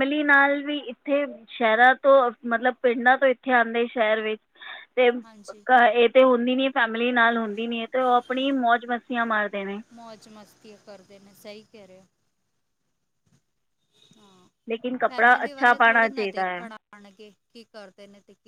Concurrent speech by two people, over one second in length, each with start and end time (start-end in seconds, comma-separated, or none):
15.1-16.6